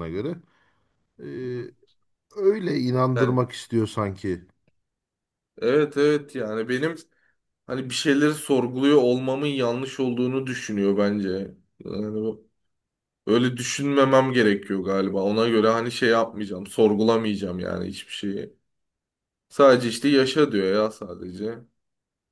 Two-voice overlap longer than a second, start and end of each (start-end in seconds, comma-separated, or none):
none